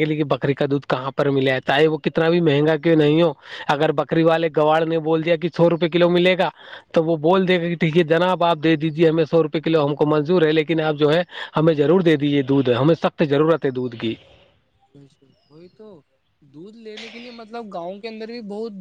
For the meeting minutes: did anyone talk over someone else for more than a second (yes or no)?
no